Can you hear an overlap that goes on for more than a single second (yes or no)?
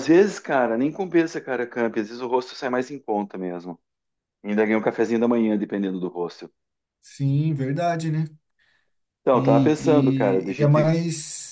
yes